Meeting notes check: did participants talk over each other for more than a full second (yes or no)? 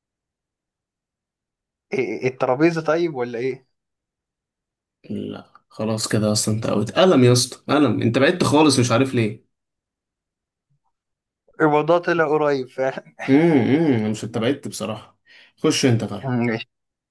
no